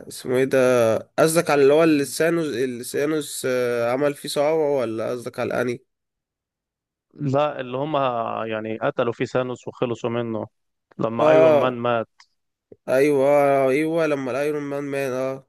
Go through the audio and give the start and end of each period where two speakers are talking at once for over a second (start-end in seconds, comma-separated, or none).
none